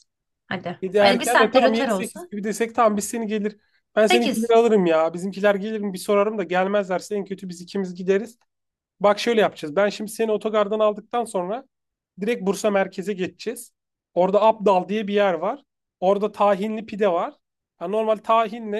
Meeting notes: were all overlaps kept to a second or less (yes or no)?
no